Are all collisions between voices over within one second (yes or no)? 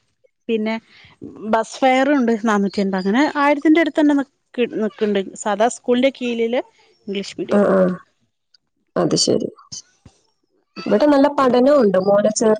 yes